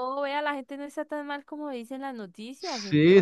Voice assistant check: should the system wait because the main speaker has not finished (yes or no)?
no